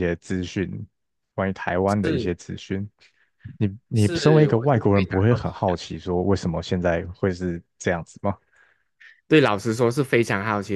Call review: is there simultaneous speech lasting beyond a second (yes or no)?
yes